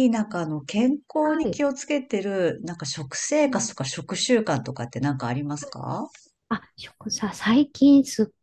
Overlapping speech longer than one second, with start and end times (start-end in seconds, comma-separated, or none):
none